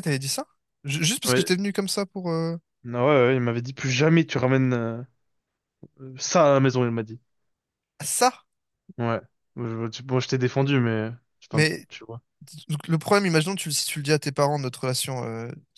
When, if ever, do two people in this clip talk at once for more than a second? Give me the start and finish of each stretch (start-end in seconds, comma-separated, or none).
none